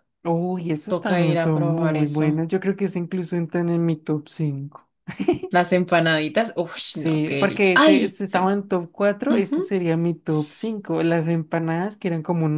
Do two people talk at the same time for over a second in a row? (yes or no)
yes